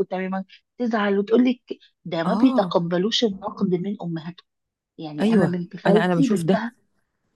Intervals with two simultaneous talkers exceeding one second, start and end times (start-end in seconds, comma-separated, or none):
5.2-6.6